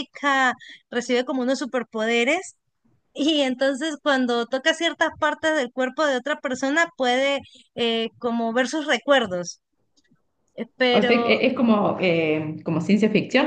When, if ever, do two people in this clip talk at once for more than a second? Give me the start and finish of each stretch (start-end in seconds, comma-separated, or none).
none